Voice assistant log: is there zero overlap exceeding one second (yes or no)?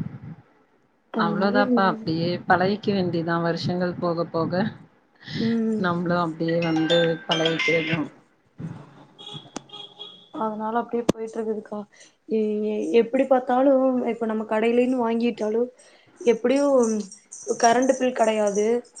yes